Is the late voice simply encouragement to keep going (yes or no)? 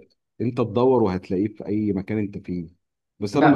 no